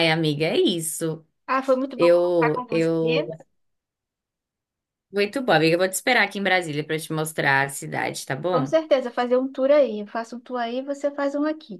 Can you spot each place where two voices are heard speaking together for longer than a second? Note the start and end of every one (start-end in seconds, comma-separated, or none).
1.9-3.3